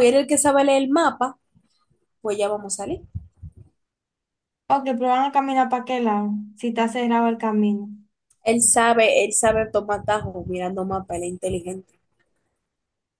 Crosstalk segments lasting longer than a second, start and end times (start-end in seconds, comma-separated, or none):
none